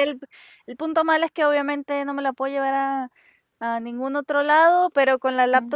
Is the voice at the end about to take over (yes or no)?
no